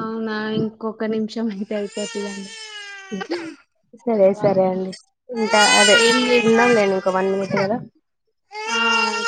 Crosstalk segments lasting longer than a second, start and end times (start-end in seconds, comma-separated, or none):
6.5-7.8